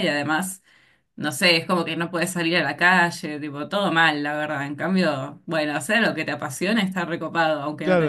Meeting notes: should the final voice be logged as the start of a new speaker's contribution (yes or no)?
yes